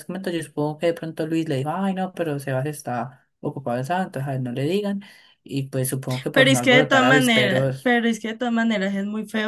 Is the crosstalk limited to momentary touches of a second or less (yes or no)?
no